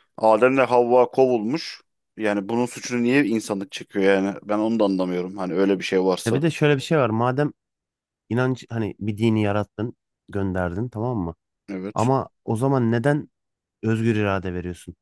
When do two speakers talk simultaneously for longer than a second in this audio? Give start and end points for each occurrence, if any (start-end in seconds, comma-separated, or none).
none